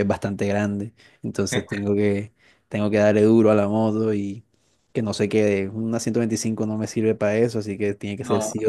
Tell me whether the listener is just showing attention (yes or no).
yes